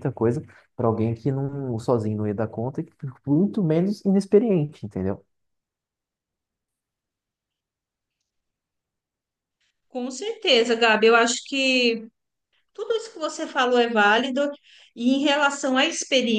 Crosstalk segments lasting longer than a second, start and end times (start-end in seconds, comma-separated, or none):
none